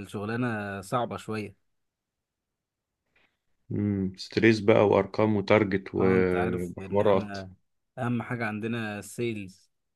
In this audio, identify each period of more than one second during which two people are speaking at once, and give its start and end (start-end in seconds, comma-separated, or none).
6.0-7.4